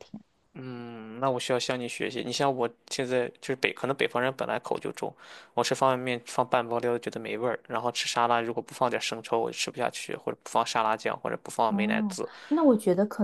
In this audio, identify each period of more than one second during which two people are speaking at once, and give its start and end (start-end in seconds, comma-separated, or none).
none